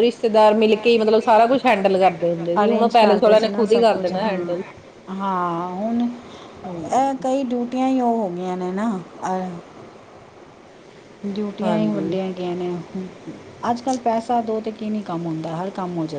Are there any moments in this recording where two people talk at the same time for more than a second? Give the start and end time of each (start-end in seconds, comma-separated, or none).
2.5-4.5